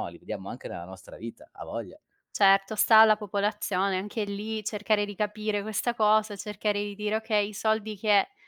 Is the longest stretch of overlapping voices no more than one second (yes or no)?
yes